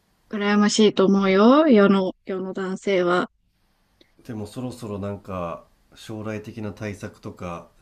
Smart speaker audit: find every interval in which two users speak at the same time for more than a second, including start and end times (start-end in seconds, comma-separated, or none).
none